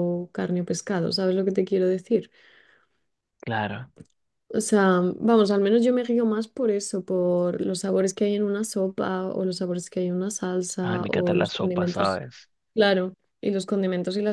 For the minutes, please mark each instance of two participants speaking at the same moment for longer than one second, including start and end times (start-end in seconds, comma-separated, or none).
10.8-12.2